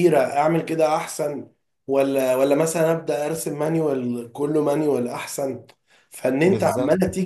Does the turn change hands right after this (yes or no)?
no